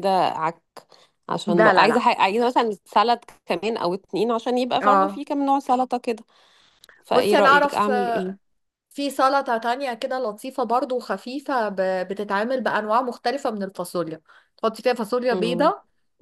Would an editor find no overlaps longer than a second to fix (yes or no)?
no